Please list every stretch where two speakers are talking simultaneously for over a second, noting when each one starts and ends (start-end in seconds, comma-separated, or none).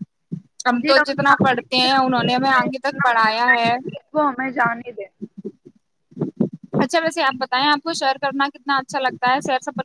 1.3-2.7